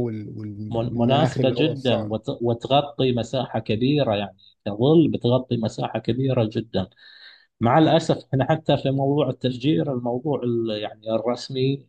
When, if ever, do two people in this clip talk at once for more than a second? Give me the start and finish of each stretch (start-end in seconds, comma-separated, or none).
0.7-2.1